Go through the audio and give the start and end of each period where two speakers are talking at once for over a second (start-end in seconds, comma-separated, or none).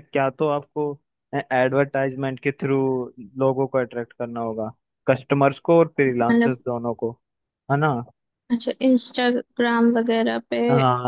none